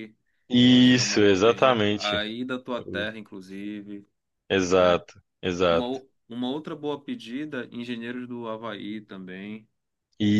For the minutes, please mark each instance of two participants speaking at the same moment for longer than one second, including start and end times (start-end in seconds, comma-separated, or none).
0.6-2.2